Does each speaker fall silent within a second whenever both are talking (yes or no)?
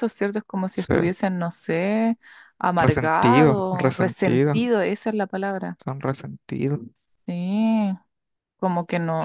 no